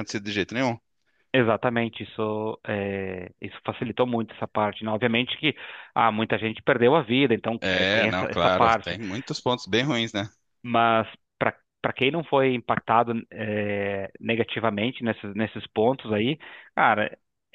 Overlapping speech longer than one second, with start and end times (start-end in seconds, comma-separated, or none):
7.6-9.0